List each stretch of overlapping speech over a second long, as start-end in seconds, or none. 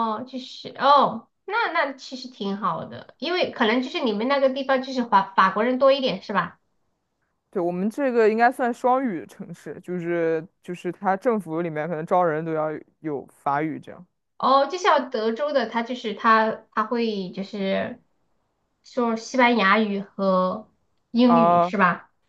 none